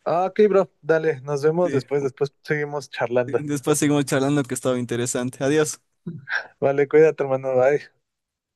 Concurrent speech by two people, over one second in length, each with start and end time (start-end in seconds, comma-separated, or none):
none